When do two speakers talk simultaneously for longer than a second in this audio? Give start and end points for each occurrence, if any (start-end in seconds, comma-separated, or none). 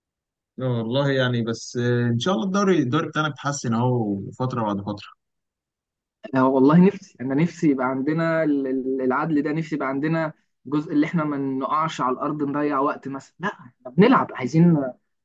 none